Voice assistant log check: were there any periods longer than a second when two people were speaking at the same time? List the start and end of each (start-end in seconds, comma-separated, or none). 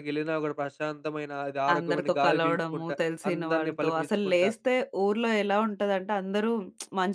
1.7-4.5